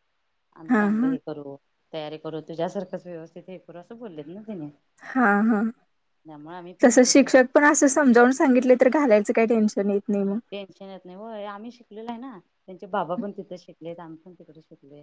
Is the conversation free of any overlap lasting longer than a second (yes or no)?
yes